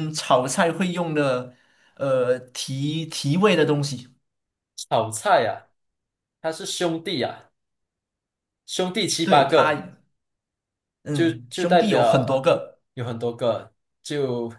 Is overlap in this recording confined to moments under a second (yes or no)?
no